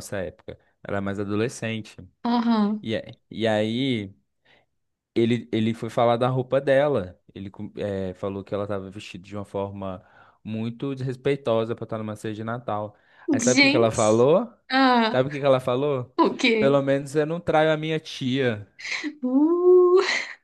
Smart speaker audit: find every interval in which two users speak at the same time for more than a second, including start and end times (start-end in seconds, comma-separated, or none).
none